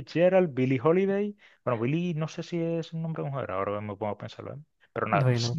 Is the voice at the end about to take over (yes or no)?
no